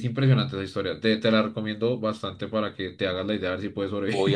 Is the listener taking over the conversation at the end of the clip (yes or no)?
yes